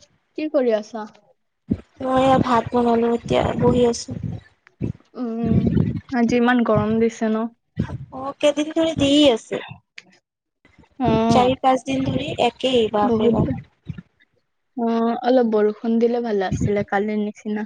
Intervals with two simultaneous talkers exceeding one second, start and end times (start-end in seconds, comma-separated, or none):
none